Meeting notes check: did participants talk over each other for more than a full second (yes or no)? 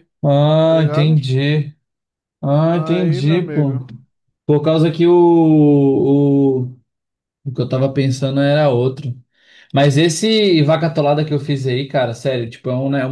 yes